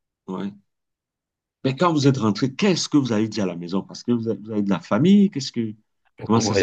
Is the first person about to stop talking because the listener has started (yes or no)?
yes